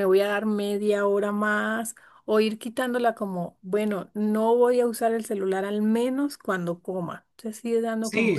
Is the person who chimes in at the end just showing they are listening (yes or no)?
no